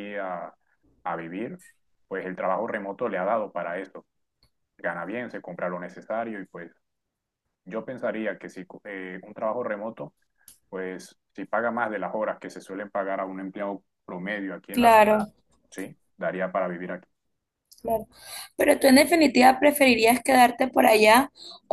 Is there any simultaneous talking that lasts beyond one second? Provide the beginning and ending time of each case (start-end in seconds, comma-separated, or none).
none